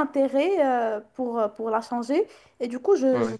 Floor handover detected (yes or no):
no